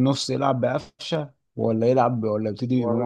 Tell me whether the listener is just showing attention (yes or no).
no